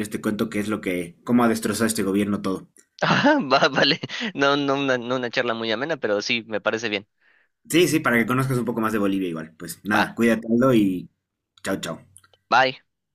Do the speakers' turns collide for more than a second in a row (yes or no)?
no